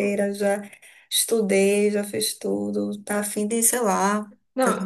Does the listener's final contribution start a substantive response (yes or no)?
yes